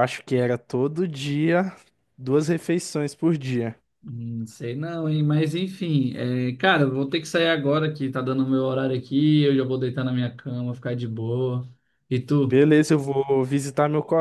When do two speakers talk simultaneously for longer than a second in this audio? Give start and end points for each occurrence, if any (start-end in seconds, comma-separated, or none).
none